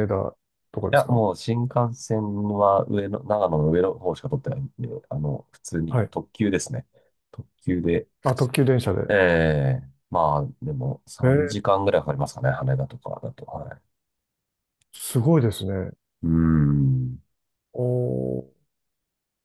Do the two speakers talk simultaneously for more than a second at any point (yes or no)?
no